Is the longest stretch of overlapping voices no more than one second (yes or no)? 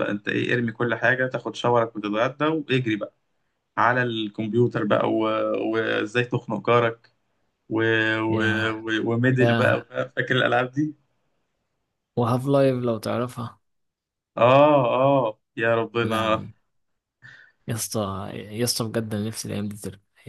yes